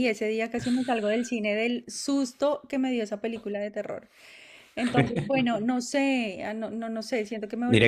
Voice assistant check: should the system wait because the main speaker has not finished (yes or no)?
no